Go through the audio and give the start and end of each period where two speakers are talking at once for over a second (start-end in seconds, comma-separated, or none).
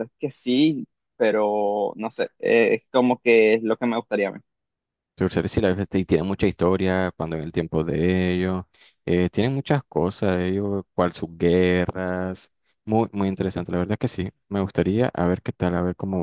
none